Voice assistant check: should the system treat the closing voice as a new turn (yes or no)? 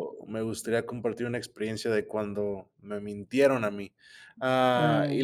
no